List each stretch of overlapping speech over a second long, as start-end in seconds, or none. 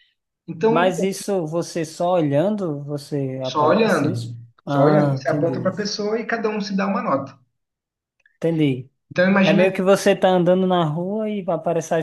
3.4-5.7